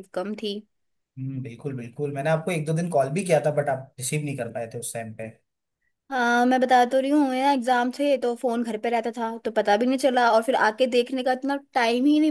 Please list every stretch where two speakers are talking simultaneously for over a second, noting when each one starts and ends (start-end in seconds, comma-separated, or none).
none